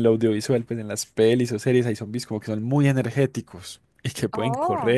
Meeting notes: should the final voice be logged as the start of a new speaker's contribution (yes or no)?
no